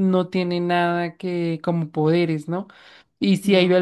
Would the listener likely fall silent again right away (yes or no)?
yes